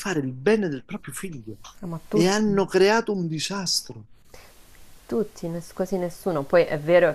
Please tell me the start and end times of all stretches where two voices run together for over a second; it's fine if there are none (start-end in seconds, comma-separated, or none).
none